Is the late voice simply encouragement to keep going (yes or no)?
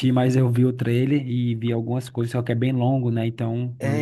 no